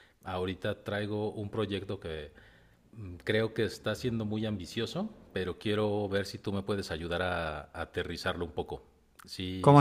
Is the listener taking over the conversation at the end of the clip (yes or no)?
yes